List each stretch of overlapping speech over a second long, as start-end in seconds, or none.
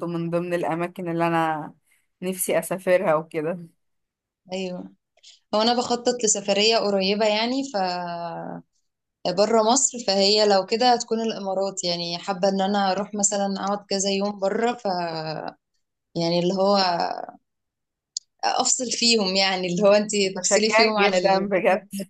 20.2-21.5